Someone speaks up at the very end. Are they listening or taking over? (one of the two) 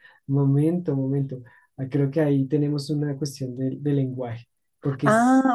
taking over